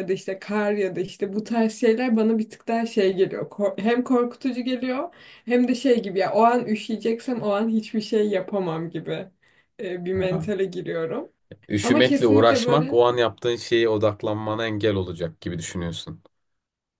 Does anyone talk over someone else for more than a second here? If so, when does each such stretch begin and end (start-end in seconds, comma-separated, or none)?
11.8-13.0